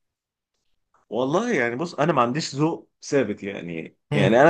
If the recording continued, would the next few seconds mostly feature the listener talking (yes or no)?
no